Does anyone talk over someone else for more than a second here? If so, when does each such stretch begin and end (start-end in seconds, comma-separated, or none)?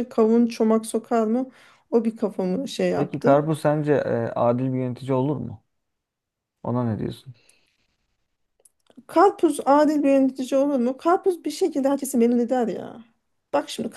none